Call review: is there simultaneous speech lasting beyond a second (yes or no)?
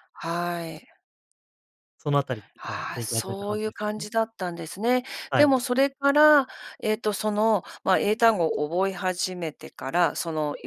yes